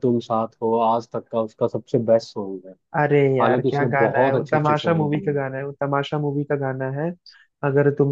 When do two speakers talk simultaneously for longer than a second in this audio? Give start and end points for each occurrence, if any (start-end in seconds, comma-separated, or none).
3.4-5.4